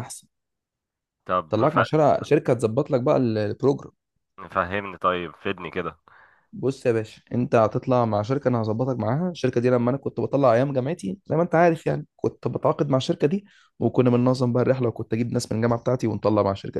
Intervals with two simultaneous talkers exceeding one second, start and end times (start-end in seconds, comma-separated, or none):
none